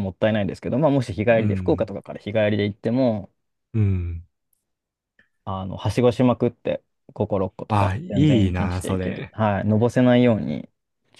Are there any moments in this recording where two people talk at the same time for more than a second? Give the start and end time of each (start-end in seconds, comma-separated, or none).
7.7-9.3